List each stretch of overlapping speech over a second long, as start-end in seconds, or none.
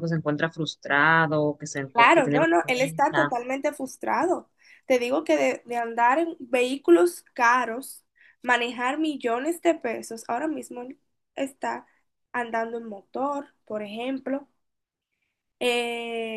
1.9-3.3